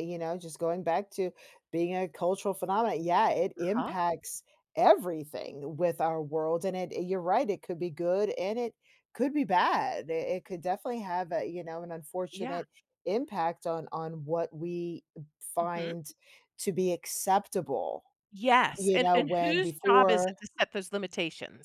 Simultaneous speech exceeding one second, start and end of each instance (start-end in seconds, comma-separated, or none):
18.8-20.3